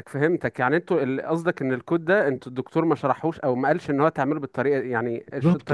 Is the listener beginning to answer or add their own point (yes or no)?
yes